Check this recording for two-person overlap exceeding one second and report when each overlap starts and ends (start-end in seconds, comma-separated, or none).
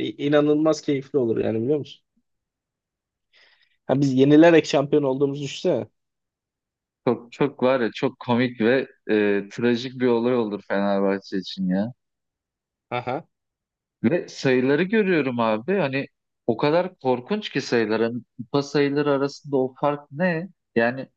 none